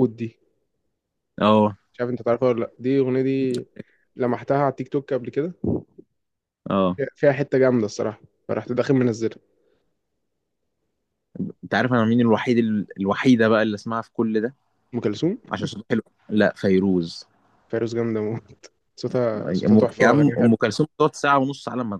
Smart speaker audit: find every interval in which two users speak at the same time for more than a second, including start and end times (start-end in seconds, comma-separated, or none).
19.4-20.7